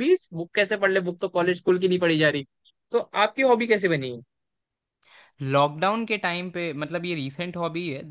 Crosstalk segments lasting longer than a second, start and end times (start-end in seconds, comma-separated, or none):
none